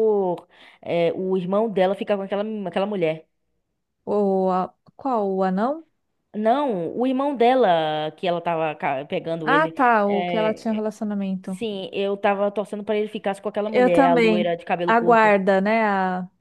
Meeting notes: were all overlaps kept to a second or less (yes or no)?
no